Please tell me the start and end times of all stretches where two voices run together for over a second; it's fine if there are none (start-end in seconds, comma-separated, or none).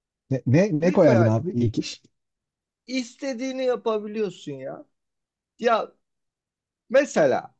none